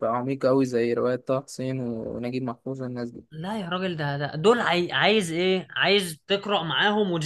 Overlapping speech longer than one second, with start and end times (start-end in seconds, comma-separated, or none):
none